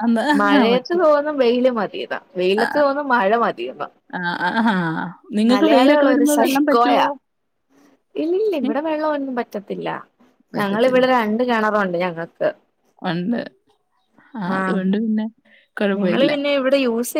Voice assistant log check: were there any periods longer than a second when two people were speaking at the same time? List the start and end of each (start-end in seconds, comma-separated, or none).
5.5-7.0